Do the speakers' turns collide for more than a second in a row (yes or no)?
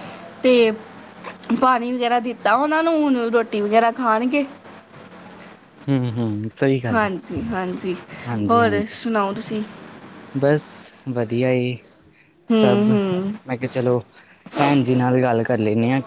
no